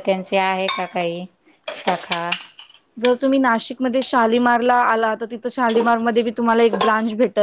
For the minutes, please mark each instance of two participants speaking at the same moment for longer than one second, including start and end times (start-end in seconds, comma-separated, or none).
none